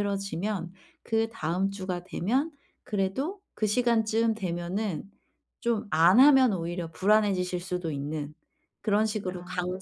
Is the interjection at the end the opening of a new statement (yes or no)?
no